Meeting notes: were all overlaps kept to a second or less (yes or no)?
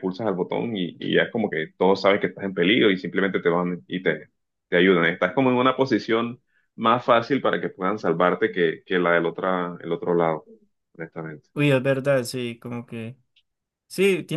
yes